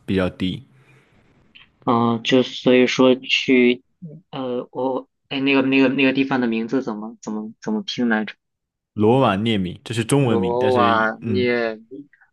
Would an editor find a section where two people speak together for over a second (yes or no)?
yes